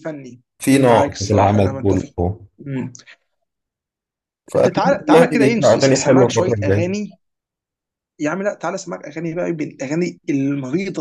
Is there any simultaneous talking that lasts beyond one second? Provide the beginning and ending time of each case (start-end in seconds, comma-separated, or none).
0.6-2.1, 4.5-6.9